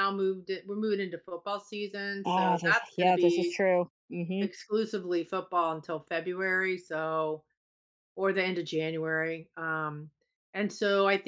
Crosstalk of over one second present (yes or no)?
yes